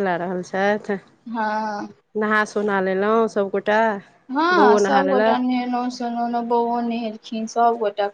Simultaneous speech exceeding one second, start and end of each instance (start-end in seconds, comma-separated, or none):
none